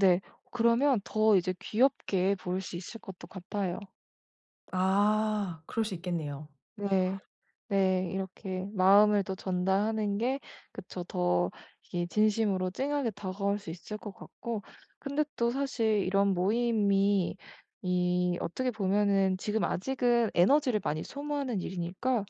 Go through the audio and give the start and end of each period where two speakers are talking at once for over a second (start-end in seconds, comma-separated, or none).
none